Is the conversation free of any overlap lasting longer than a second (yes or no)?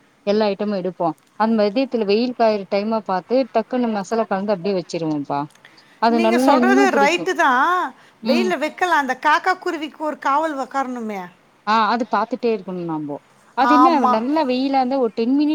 yes